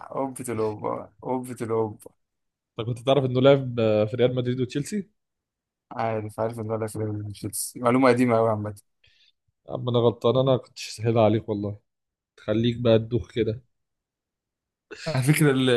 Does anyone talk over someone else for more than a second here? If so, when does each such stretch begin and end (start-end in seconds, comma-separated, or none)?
none